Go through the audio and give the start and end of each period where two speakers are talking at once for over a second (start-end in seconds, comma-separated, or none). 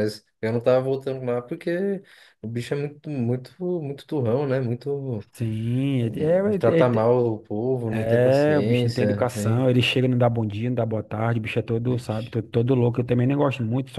7.9-9.7